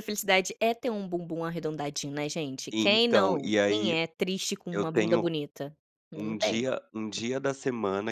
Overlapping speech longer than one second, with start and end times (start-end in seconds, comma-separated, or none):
2.7-4.0